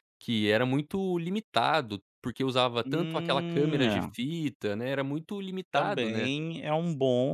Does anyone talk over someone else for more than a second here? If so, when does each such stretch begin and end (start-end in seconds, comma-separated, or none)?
2.8-4.1